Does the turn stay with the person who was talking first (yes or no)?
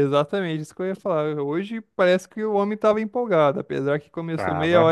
yes